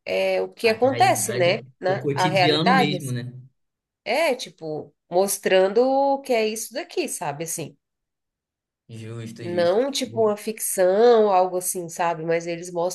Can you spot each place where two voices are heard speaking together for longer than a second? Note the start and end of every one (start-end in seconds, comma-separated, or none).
0.7-3.1